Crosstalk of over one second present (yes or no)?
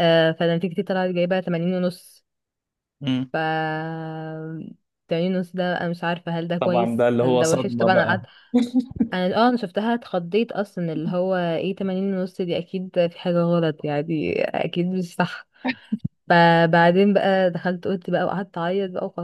yes